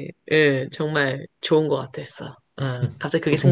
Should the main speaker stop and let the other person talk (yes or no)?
yes